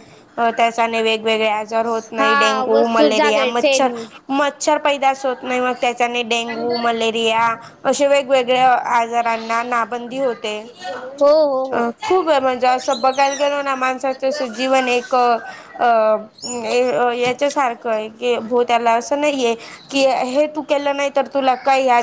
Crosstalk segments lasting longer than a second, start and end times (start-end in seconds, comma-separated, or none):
2.2-3.9